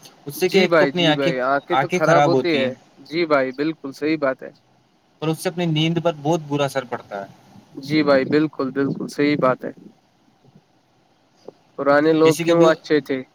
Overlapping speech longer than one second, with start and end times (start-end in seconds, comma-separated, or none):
none